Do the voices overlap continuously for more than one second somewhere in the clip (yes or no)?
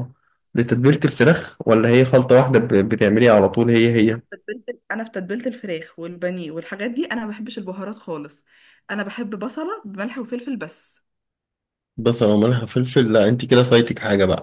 no